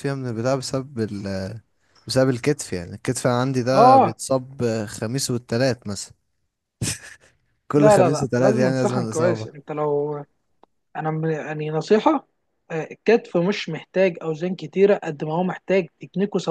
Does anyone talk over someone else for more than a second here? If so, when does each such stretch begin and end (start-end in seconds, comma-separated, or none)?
7.8-9.5